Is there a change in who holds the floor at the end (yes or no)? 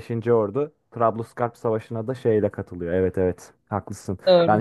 no